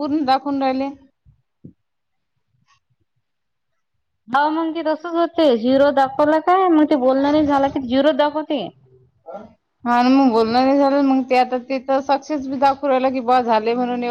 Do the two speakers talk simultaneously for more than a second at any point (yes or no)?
no